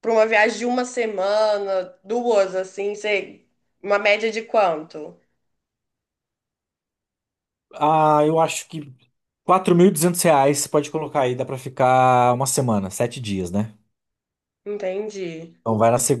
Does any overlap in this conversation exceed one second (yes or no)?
no